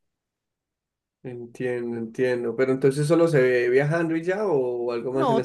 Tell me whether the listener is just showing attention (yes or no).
no